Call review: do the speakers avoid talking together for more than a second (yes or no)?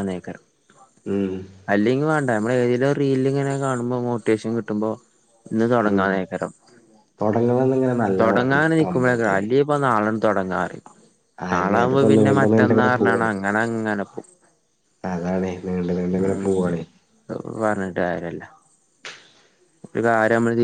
no